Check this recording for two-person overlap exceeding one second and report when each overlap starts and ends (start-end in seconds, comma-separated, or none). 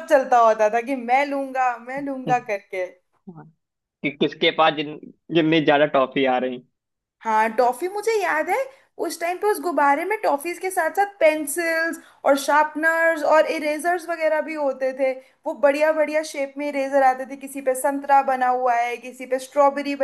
none